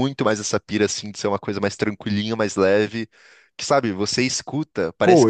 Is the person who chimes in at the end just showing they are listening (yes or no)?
no